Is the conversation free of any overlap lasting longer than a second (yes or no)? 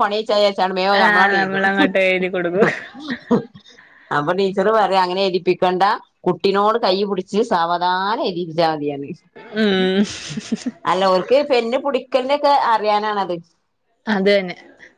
yes